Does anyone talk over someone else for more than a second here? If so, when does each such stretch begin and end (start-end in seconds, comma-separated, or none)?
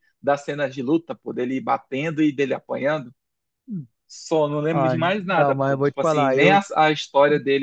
4.7-6.6